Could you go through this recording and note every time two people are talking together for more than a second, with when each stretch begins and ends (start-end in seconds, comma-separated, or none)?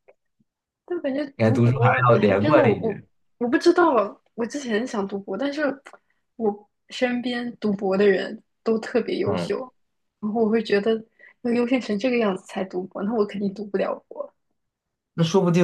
1.4-3.0